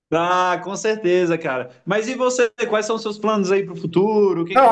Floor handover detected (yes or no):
yes